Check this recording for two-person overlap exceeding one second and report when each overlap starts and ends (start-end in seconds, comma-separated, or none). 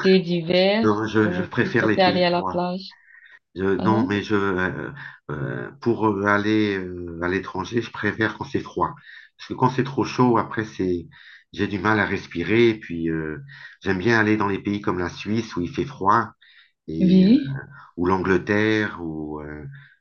0.8-2.6